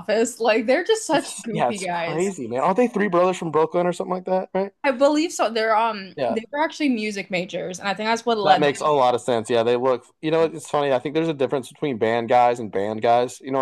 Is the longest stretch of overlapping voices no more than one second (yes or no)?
no